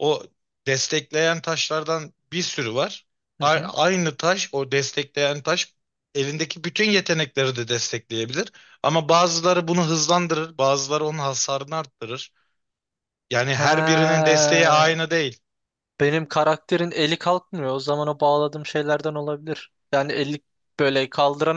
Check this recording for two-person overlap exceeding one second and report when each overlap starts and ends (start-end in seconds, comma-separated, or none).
13.5-14.9